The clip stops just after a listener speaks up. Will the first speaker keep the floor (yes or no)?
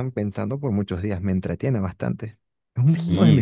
no